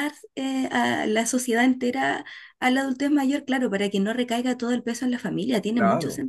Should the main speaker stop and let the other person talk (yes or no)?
yes